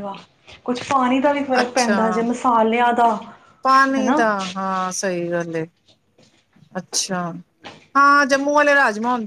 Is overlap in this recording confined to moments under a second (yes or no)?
yes